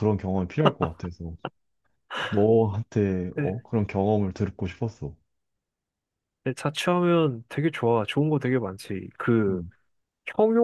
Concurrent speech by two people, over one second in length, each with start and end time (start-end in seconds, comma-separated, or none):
none